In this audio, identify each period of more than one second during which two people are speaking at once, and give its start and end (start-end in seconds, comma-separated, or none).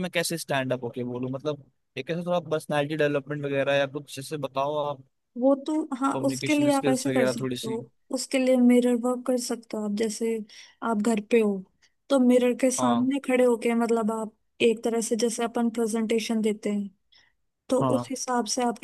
6.2-7.8